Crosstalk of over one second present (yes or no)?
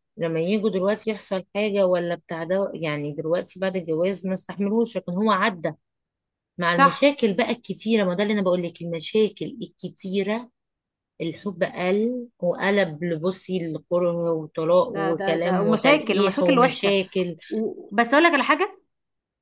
yes